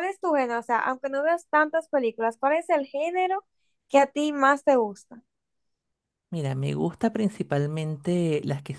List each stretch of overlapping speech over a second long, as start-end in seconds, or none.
none